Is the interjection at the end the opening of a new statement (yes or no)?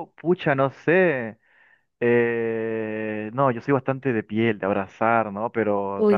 no